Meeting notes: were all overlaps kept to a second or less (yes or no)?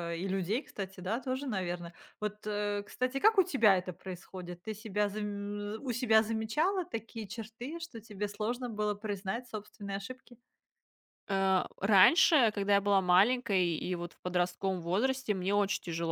yes